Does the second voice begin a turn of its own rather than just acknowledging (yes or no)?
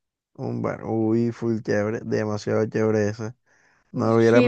yes